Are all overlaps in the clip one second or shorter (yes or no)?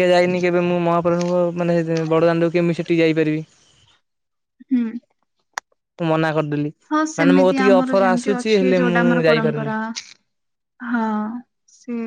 no